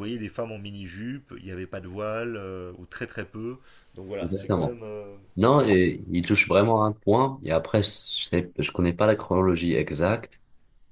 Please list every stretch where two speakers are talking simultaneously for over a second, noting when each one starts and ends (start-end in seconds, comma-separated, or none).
none